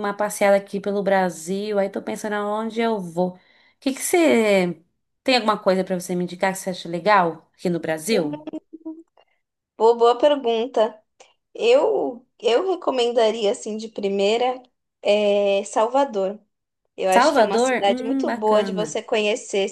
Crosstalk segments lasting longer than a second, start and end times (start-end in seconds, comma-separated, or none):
17.1-19.0